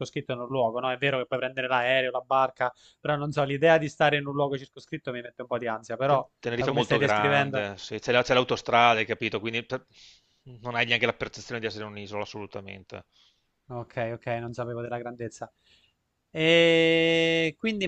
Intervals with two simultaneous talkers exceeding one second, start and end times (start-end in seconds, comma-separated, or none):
6.0-7.7